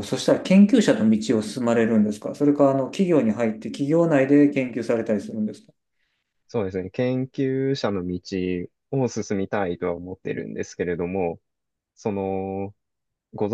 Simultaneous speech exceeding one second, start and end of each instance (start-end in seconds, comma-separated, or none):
none